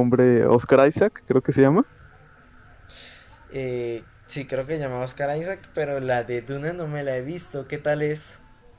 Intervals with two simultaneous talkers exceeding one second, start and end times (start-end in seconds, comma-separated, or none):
none